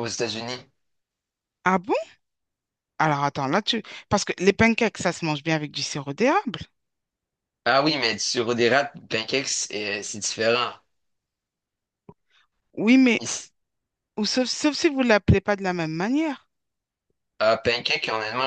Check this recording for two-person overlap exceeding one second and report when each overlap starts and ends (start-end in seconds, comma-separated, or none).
none